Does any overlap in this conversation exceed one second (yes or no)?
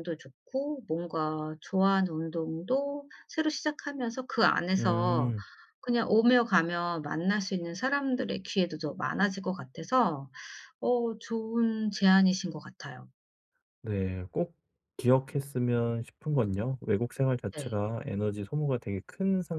no